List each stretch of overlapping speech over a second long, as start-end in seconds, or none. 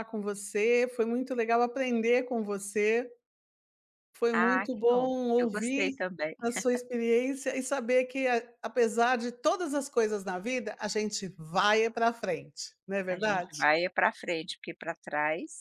4.3-5.9